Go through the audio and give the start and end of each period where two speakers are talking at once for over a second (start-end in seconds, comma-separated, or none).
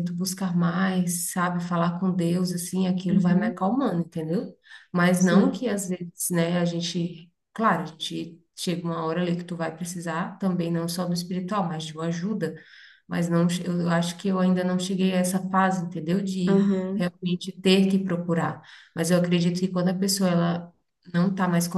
none